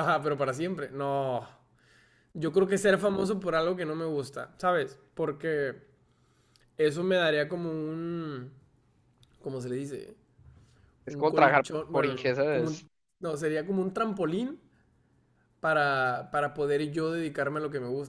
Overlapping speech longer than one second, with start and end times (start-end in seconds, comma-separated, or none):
11.1-12.9